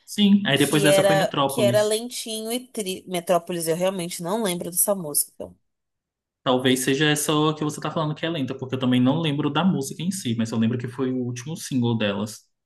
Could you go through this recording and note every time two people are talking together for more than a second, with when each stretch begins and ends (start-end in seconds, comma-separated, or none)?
0.6-2.0